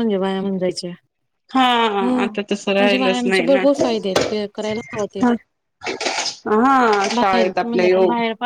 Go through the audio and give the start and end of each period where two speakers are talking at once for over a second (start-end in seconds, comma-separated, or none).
2.2-3.6